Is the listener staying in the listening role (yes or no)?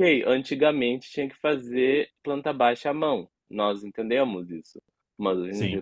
yes